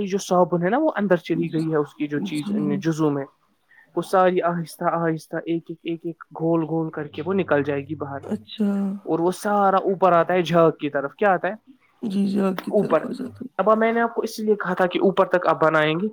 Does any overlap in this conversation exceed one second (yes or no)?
no